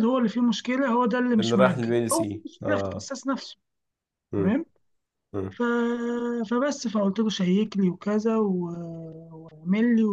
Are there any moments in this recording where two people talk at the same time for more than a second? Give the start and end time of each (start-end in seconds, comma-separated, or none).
1.4-3.1